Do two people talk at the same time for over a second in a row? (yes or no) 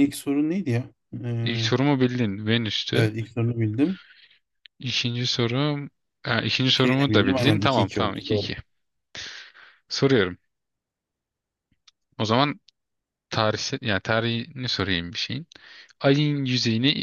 yes